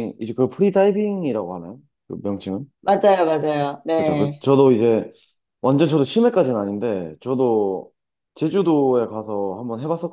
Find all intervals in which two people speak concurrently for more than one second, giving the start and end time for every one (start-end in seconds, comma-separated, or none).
none